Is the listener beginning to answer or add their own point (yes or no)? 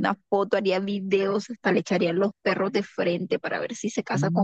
yes